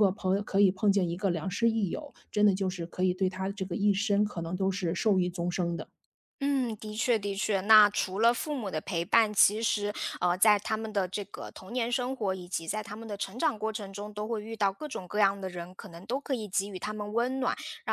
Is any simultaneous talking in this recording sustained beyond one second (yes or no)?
no